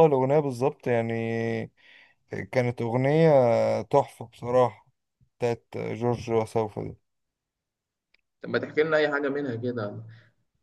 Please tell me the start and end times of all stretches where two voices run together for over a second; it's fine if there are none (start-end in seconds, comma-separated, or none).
none